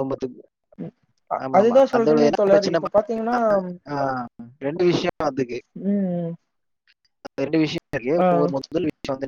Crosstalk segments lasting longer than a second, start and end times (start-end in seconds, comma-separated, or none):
1.4-3.4